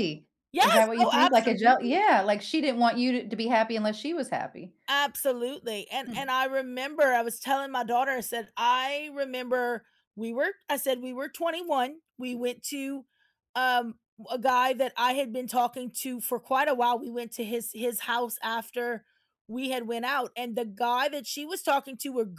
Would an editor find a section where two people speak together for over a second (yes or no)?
yes